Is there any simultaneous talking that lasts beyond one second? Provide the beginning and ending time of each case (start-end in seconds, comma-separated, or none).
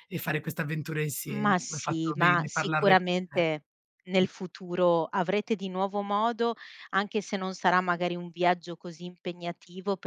1.3-3.5